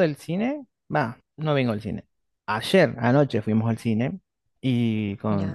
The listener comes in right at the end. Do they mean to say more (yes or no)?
no